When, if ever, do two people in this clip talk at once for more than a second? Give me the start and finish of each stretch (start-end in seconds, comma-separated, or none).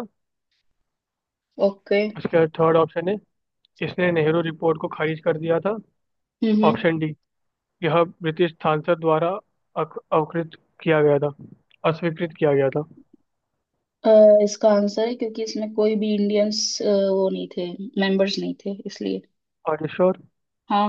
none